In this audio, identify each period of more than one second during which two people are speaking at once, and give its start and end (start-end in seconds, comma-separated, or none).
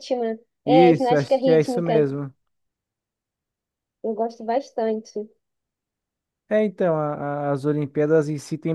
0.7-2.0